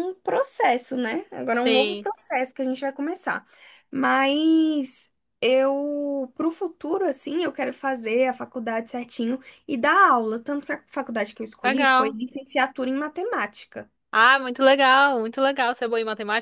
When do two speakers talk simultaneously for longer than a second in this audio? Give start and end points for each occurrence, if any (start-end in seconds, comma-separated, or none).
none